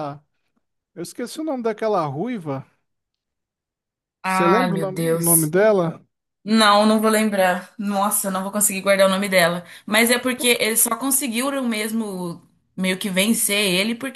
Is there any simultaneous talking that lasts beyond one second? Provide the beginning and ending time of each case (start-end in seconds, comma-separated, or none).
4.2-5.5